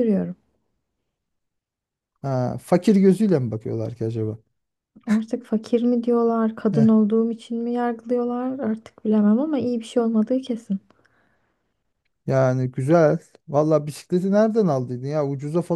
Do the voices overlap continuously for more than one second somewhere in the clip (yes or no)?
no